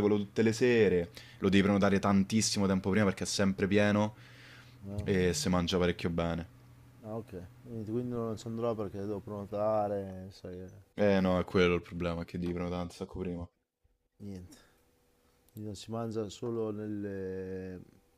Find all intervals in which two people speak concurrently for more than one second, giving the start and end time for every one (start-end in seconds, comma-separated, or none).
none